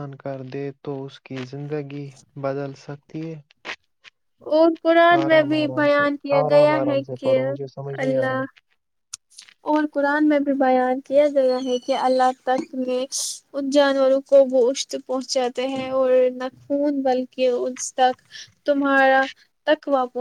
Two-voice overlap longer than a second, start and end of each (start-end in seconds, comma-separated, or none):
5.2-7.4